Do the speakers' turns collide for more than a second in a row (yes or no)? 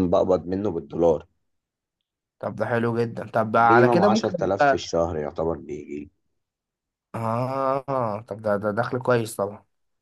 yes